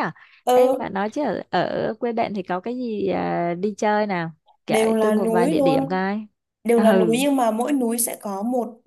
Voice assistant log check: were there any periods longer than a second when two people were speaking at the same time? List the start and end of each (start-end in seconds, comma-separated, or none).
4.7-6.0